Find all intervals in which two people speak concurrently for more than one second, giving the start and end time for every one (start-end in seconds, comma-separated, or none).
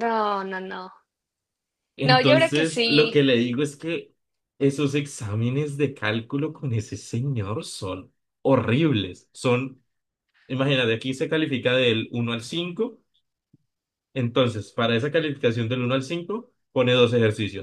2.0-3.2